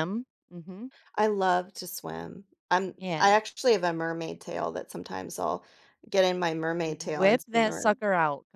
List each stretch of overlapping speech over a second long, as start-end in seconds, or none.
6.8-8.1